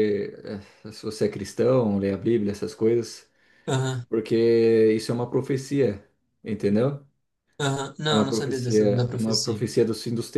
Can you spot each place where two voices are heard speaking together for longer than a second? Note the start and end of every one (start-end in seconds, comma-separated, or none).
8.1-9.6